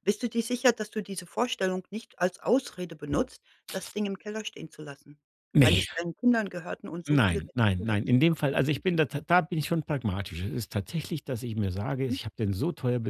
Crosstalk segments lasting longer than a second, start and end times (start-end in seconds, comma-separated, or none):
7.1-8.8